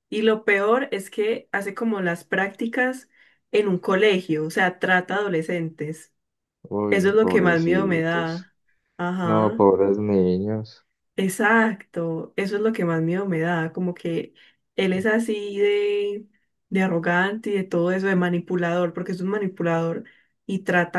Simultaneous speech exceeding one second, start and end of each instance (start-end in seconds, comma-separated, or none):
6.9-8.5